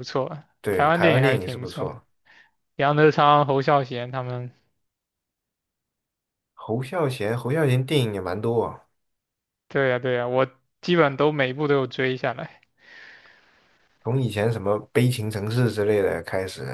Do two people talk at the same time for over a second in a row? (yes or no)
yes